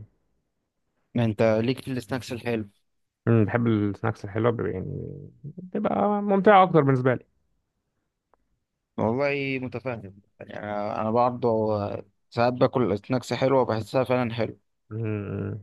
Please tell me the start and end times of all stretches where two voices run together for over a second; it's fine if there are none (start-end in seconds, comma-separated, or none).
none